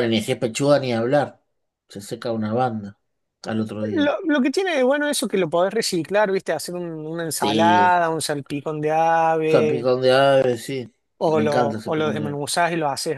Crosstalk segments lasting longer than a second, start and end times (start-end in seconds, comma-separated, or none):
11.2-12.4